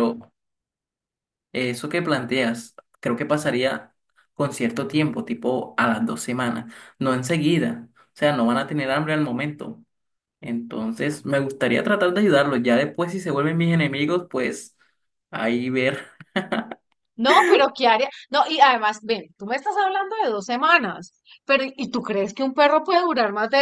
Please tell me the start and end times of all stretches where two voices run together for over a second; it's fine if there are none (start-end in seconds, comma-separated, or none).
none